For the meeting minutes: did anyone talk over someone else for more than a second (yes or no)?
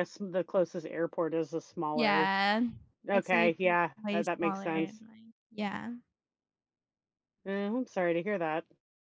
yes